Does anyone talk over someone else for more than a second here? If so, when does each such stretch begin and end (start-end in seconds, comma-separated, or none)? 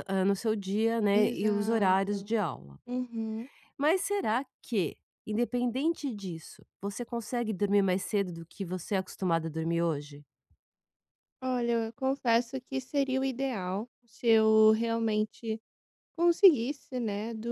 1.1-2.3